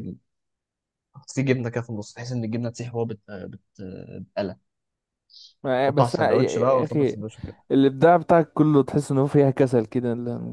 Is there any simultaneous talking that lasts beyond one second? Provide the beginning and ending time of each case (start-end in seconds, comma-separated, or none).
5.9-7.2